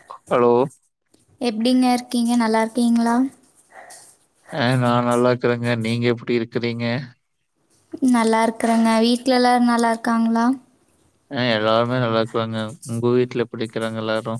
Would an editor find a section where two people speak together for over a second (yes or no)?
no